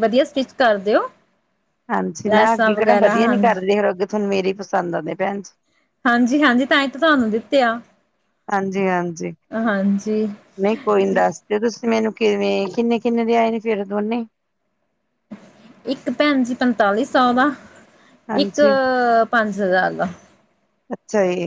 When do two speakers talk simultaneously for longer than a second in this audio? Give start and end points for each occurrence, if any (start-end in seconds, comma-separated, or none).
none